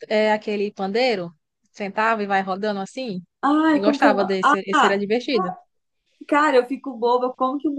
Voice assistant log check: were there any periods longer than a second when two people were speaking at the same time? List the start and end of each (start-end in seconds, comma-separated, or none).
3.7-5.0